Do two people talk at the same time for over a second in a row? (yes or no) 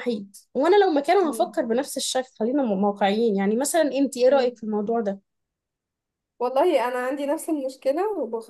no